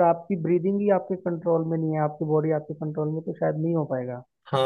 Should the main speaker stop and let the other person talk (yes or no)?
yes